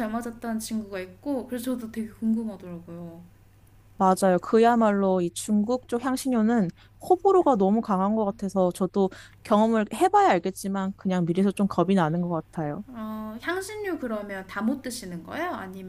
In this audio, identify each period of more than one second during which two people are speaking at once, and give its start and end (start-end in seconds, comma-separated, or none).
none